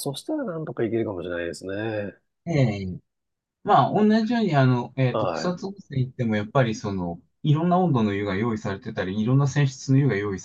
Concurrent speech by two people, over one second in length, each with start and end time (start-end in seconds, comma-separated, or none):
none